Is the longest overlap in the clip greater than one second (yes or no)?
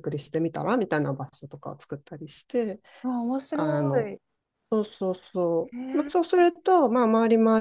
no